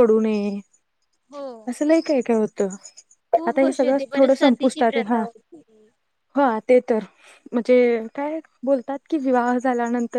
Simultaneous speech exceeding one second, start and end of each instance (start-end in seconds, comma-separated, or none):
3.5-5.2